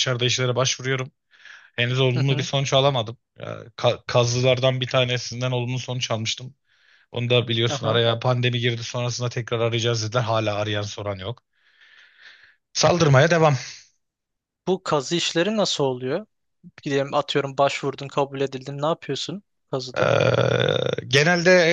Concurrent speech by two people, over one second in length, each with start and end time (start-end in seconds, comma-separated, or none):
none